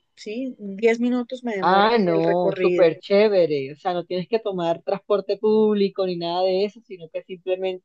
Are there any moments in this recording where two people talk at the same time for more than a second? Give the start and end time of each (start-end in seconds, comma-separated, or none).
1.6-2.9